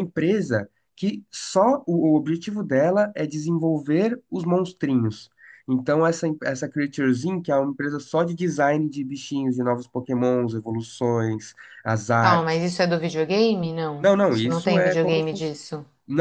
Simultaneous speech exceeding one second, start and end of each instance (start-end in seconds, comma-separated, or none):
14.0-15.5